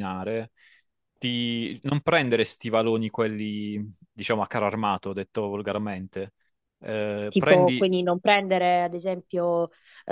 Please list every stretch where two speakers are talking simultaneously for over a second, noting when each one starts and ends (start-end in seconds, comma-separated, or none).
none